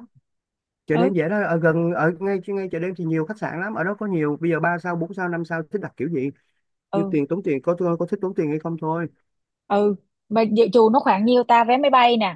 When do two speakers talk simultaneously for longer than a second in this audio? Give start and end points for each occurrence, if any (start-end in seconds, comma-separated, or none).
none